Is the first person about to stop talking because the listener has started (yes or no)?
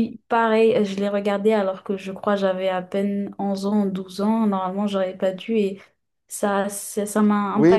yes